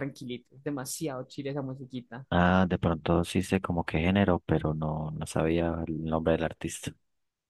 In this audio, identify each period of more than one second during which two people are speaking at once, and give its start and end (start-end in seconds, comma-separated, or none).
none